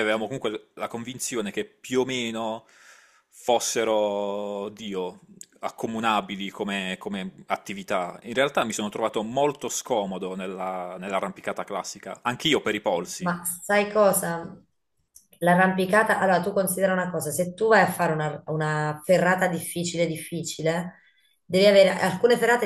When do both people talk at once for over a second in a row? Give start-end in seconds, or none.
none